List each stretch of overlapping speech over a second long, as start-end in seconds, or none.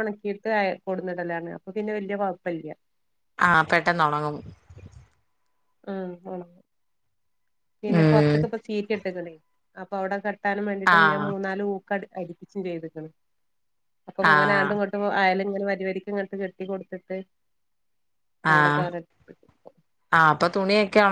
none